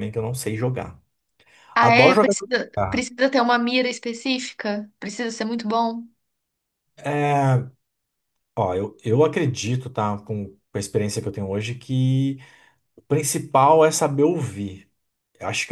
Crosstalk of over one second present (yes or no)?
yes